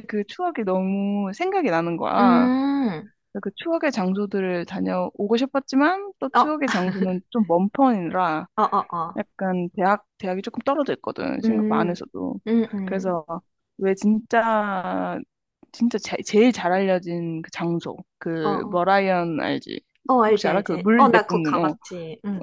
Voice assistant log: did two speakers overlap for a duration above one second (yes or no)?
yes